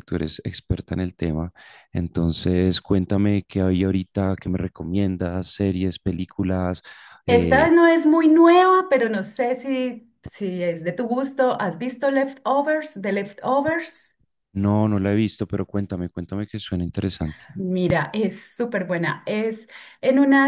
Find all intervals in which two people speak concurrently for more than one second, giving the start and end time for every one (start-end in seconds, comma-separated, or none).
none